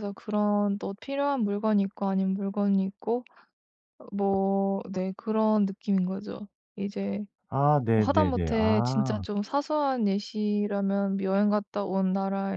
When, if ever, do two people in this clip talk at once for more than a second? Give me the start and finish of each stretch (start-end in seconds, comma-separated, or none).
8.0-9.2